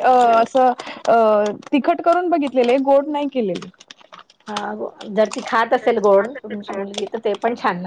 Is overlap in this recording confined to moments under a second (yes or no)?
yes